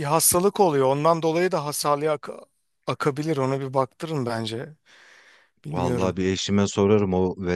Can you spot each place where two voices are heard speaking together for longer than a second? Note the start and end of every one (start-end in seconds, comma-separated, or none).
none